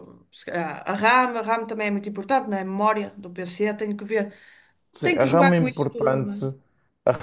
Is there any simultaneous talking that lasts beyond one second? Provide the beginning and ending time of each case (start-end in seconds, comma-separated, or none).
5.0-6.5